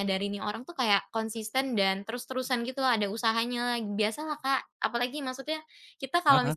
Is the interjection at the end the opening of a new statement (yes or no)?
no